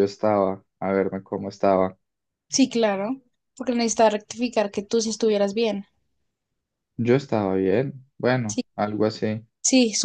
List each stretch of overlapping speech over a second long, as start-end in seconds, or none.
none